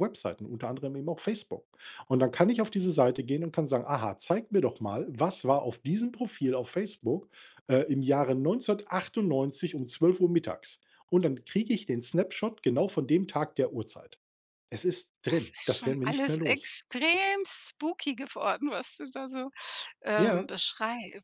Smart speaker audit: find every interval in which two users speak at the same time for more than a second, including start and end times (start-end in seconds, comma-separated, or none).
15.2-16.7